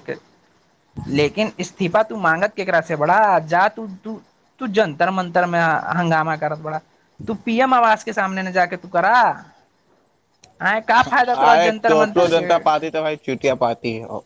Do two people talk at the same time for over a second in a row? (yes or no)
yes